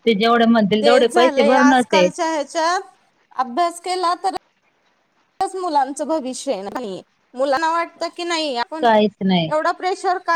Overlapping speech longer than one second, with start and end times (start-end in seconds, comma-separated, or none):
none